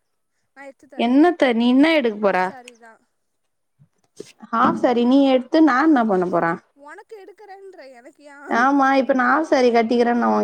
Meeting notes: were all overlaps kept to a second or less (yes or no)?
yes